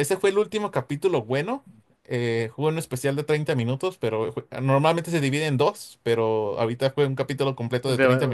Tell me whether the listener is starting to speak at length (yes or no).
yes